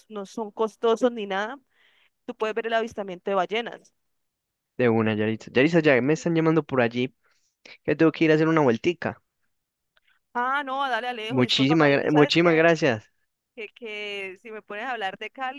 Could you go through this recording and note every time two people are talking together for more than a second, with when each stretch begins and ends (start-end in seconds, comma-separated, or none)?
11.3-12.6